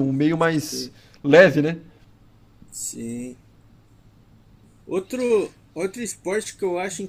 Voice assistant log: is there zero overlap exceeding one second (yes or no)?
yes